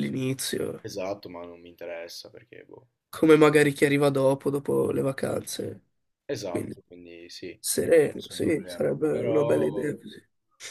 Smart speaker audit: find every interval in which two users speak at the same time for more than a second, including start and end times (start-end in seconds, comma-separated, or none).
7.8-9.9